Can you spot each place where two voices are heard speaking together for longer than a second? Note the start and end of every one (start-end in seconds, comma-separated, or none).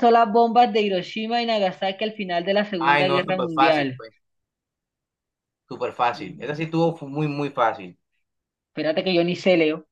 2.8-4.0